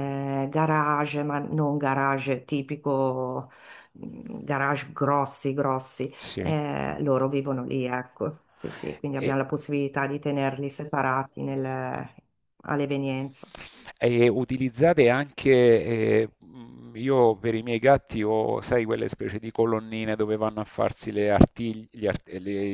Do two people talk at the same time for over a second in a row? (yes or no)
no